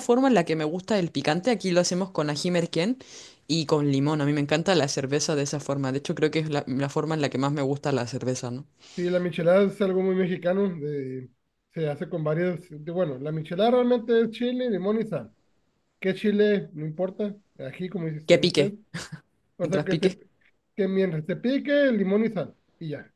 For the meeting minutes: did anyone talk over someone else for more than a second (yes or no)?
no